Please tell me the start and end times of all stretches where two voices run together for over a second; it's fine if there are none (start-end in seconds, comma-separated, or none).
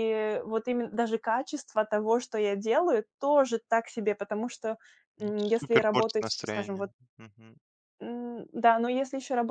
5.2-6.9